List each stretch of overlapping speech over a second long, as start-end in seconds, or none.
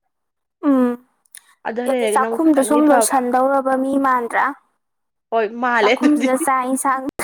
1.9-3.2